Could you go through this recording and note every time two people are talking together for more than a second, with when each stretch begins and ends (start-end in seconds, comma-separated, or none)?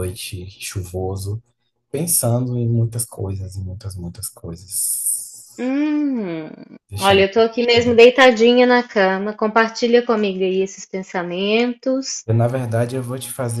none